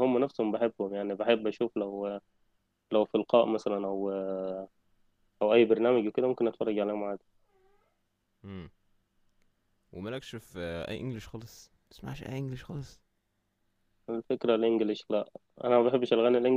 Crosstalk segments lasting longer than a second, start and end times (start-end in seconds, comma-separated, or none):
none